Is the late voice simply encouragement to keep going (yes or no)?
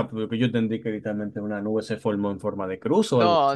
no